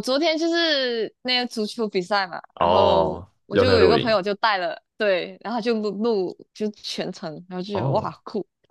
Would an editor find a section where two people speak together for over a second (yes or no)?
yes